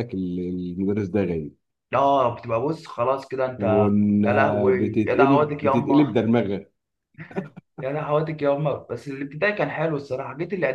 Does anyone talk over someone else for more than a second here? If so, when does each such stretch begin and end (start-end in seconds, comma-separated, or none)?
4.8-6.1